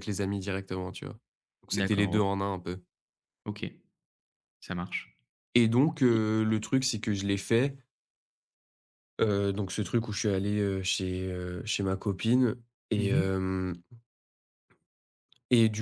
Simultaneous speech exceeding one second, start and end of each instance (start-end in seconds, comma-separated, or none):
none